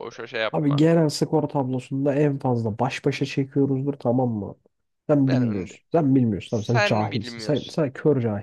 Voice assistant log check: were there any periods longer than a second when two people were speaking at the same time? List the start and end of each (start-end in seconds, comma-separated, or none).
6.5-7.8